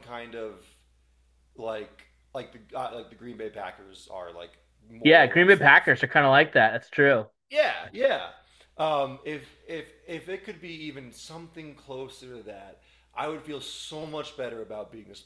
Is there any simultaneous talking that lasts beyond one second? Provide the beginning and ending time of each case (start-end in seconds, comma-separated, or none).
5.0-6.5